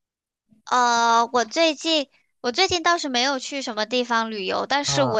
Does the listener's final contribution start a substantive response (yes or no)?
no